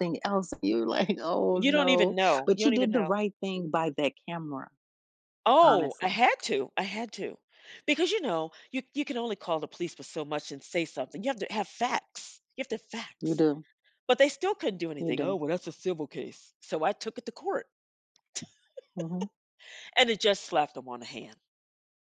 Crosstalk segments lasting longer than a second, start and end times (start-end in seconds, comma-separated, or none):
1.6-3.1